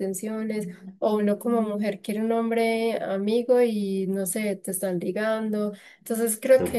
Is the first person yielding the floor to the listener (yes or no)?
no